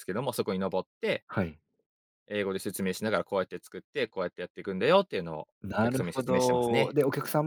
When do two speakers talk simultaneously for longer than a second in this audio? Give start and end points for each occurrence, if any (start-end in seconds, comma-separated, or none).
5.6-6.9